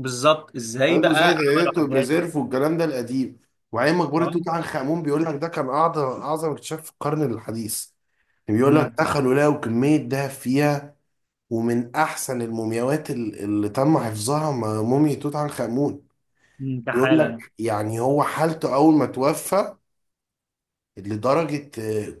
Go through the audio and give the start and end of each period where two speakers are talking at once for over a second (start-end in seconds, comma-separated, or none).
0.9-2.1